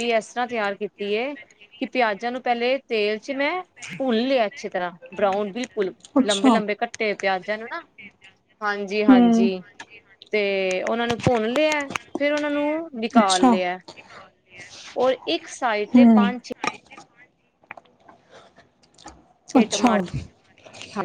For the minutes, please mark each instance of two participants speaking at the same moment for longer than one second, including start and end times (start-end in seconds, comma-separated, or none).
none